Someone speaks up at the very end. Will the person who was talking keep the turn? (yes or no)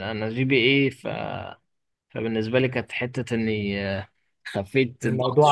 yes